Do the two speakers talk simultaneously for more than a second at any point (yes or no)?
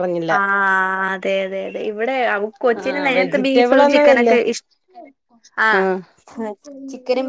yes